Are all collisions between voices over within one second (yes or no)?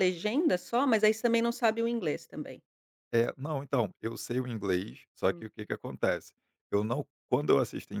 yes